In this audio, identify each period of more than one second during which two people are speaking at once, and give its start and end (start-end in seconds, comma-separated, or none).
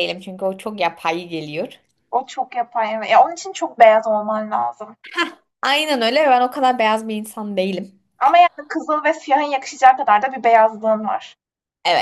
none